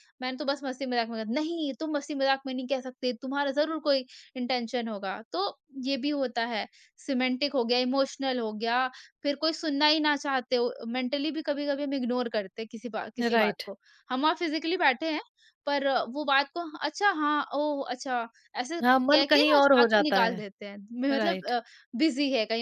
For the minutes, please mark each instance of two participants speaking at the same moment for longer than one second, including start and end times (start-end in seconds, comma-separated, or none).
18.8-20.4